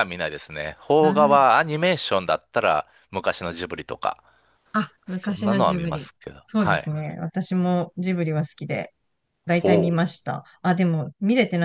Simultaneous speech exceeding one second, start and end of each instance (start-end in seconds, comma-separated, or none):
5.1-6.9